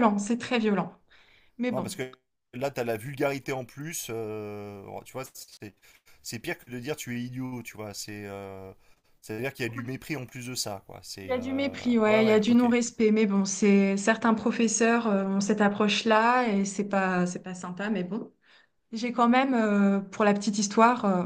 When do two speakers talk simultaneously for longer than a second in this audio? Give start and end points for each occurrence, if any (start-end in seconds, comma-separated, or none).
11.2-12.7